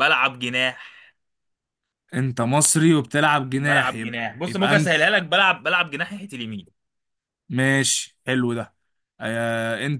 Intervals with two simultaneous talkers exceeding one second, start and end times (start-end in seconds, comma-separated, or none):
3.5-5.0